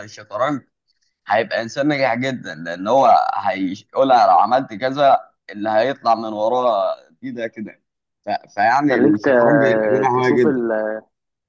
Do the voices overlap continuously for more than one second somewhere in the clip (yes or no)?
yes